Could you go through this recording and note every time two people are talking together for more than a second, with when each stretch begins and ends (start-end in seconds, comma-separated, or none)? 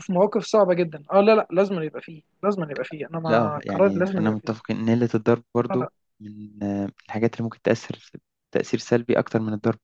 3.3-4.5